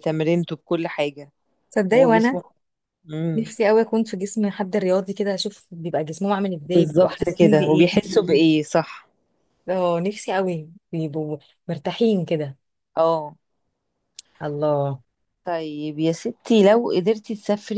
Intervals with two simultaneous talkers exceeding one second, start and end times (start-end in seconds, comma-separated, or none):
6.7-7.9